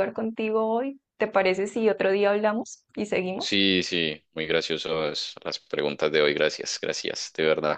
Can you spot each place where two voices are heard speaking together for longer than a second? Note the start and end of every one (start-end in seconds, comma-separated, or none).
none